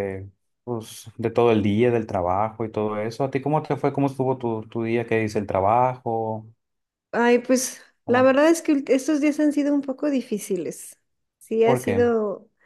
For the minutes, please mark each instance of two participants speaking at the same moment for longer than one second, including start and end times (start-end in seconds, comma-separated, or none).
none